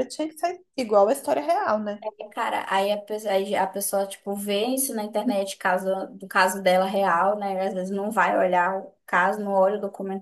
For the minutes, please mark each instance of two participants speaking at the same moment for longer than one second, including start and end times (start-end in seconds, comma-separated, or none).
none